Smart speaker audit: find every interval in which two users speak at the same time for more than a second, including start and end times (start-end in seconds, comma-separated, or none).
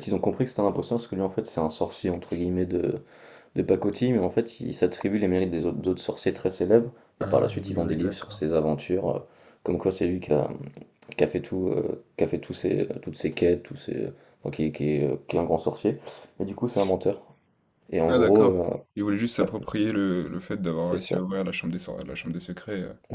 7.2-8.6